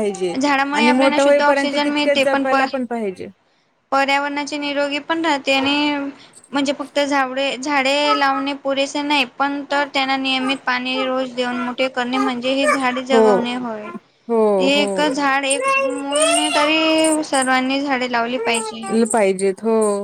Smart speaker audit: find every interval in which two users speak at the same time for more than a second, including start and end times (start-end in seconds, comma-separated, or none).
0.8-2.6